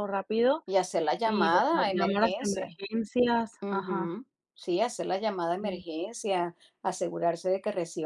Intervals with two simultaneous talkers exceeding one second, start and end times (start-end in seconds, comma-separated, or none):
1.2-2.8